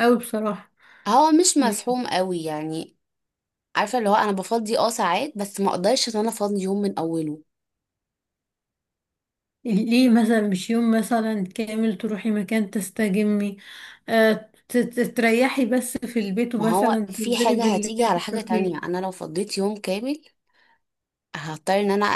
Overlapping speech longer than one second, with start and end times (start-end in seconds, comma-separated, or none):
16.6-18.9